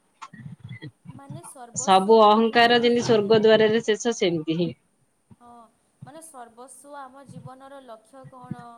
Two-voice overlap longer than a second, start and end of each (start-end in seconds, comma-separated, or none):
1.9-3.4